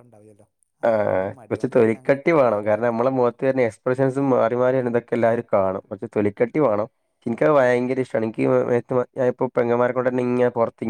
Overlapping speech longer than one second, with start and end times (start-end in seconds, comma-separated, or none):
0.9-2.8